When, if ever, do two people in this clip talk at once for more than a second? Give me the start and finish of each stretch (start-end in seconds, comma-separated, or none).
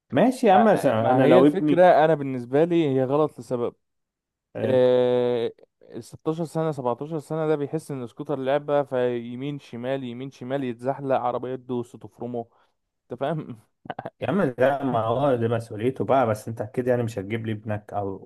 0.5-1.9